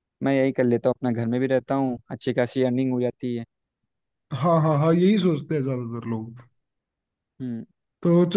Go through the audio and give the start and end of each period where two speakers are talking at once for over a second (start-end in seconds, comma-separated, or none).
none